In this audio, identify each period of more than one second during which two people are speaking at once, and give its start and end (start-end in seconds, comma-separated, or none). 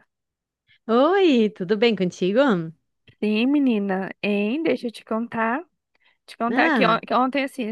none